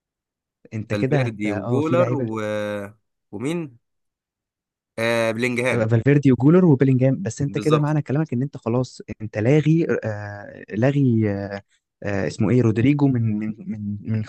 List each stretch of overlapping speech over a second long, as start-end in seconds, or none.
0.9-2.3